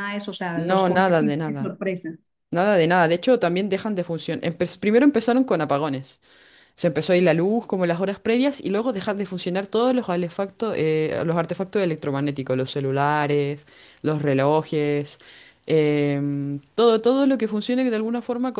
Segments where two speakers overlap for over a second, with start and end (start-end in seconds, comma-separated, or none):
0.6-1.8